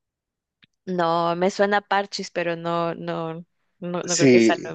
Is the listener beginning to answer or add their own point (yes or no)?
yes